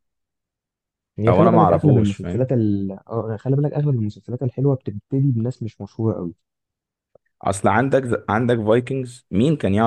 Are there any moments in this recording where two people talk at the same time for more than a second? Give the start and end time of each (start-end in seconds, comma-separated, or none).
1.3-2.5